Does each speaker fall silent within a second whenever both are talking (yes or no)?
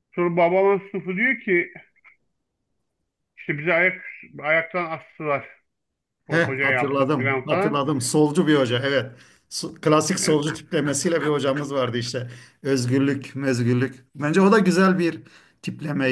no